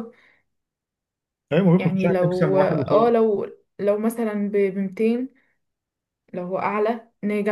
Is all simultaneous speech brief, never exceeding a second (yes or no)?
no